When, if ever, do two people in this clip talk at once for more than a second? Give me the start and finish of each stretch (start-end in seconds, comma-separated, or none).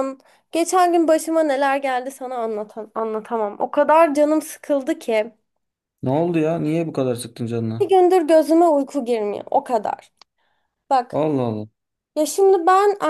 none